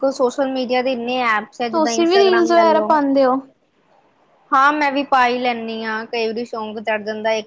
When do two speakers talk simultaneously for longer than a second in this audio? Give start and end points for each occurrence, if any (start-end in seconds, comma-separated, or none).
none